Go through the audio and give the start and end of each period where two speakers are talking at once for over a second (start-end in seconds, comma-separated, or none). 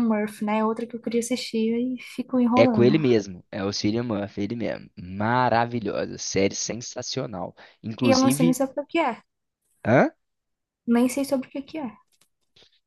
none